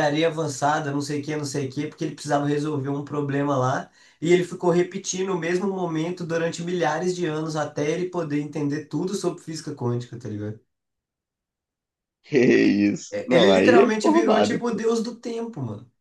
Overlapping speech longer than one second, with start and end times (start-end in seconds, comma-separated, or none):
13.1-14.8